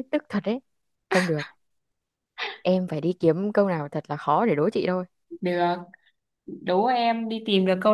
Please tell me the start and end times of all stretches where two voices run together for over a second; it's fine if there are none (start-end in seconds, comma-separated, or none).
none